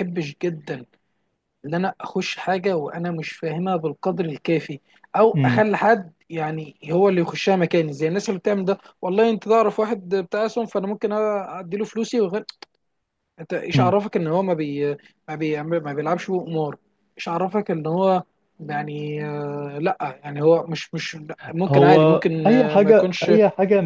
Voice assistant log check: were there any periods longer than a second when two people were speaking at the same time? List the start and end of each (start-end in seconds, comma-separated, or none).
21.7-23.3